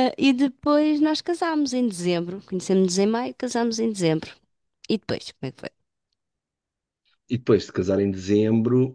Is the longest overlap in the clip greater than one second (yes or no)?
no